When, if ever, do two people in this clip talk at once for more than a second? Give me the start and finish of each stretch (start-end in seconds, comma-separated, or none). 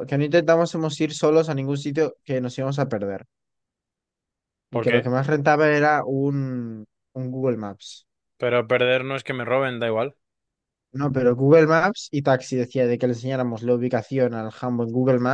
none